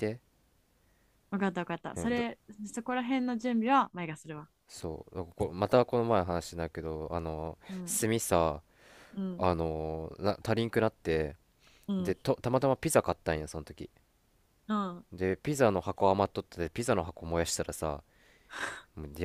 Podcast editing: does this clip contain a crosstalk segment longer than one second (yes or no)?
no